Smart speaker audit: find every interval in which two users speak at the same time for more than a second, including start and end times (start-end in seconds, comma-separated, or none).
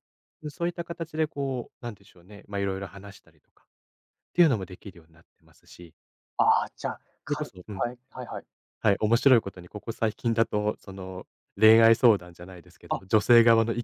none